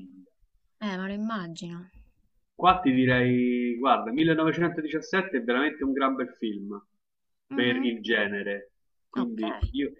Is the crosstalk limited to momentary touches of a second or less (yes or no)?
yes